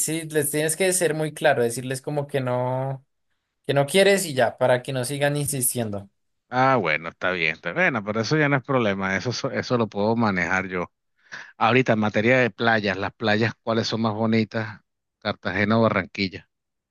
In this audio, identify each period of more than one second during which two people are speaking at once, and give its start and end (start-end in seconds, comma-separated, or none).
none